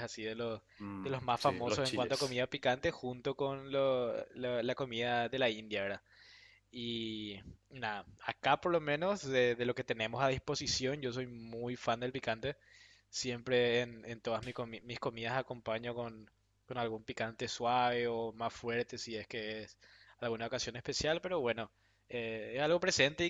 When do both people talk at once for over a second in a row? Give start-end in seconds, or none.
1.0-2.4